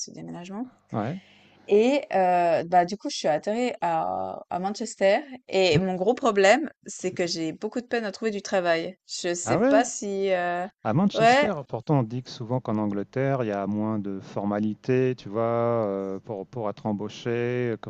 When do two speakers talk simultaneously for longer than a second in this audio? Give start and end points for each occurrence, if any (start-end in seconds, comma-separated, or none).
none